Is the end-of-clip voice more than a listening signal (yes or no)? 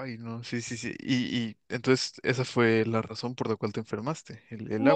yes